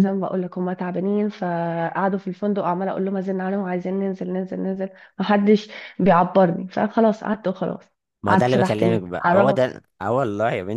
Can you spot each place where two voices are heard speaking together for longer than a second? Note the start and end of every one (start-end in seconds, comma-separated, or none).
8.3-9.7